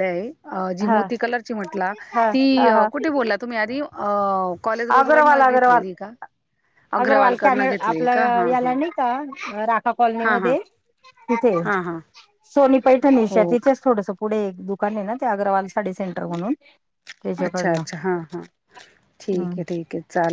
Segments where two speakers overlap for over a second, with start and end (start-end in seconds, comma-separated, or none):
7.0-8.7